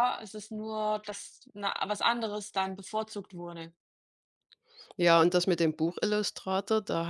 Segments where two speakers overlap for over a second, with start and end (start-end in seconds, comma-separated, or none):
none